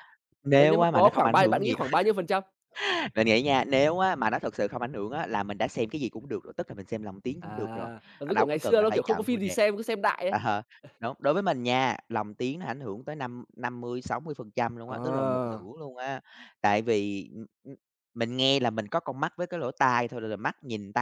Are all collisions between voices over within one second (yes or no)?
no